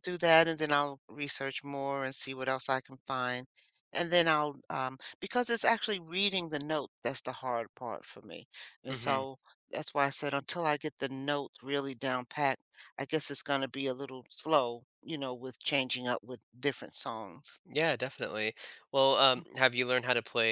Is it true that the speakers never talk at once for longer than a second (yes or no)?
yes